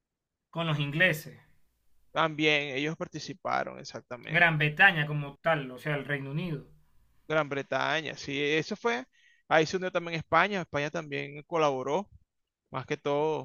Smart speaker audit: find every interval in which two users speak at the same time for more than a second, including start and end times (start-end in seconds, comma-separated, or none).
none